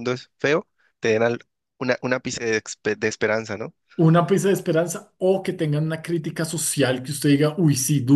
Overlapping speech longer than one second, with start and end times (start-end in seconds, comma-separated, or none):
none